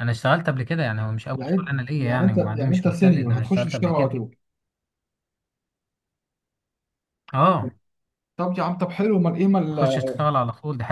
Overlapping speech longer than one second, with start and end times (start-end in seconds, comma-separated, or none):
1.3-4.2